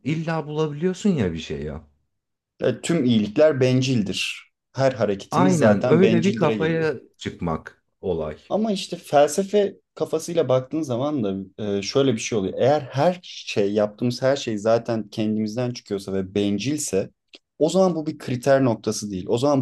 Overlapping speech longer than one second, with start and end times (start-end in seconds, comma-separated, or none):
5.3-6.9